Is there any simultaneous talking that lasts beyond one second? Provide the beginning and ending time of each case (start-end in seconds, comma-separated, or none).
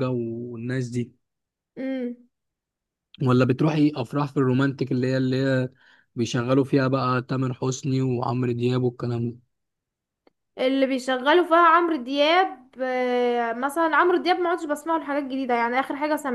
none